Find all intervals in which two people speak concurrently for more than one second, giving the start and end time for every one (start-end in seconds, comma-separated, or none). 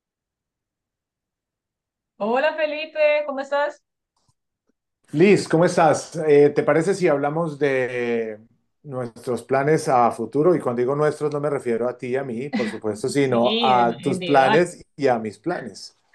13.2-14.6